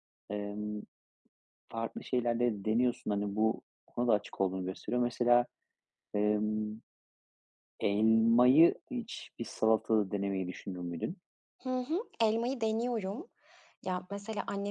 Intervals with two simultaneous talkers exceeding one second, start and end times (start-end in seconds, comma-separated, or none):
none